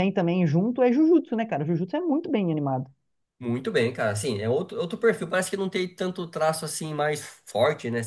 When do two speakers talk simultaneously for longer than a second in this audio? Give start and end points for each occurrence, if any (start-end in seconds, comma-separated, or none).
none